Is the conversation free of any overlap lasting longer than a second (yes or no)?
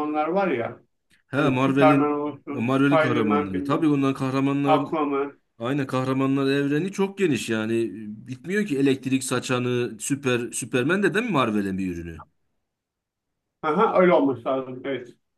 no